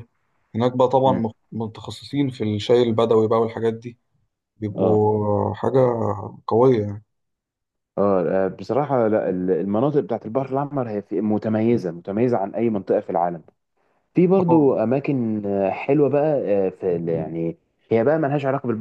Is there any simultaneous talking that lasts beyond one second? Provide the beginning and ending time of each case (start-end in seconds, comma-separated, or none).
none